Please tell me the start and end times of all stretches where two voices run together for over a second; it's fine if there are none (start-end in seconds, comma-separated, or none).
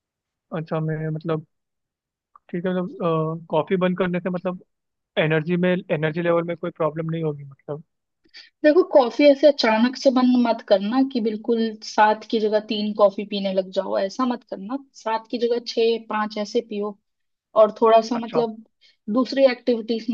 none